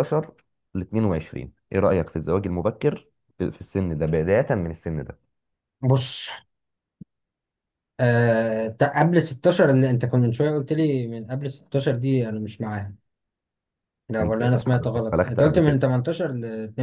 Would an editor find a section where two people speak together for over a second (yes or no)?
yes